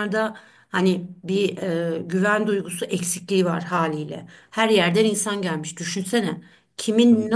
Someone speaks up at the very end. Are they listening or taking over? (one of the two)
listening